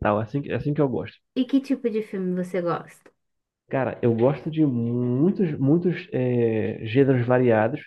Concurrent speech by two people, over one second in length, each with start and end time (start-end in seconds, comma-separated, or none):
none